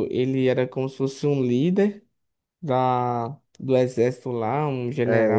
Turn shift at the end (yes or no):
yes